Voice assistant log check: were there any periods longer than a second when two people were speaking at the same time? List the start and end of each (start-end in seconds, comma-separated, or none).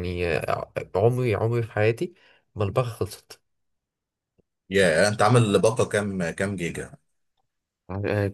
none